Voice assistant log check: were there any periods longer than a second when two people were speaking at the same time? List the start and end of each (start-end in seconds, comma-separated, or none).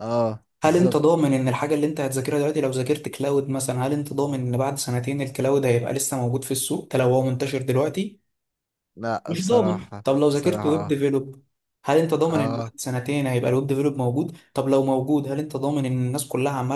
9.3-10.9